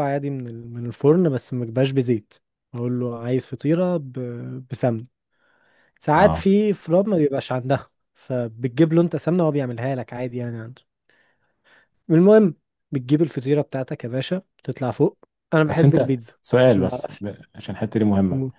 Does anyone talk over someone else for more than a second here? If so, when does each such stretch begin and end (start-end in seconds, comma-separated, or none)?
15.7-17.2